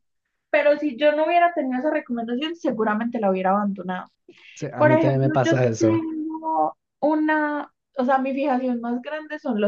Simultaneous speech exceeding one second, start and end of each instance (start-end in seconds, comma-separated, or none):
4.8-6.0